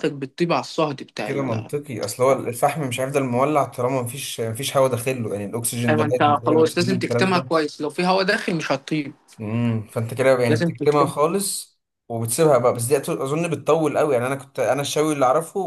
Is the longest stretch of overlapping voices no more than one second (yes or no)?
no